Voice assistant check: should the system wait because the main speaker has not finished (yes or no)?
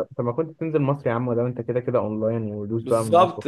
no